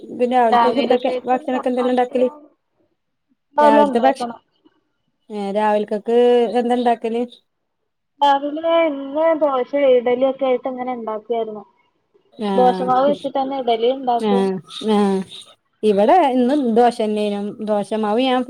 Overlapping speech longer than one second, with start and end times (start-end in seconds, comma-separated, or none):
0.5-2.3